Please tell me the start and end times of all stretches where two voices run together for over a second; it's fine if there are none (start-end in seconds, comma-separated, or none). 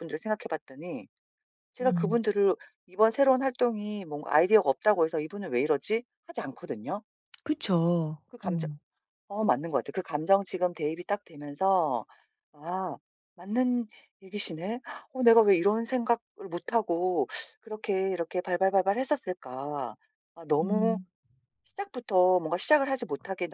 none